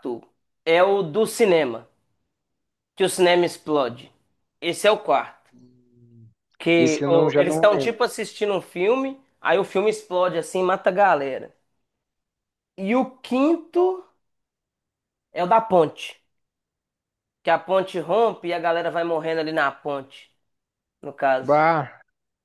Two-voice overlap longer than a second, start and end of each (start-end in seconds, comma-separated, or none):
6.8-8.0